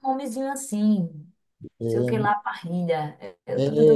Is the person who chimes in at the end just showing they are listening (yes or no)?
no